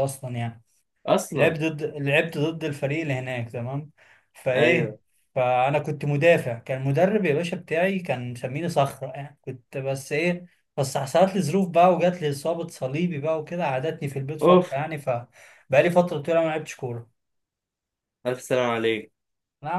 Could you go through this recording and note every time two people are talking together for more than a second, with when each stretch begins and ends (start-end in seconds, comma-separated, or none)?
none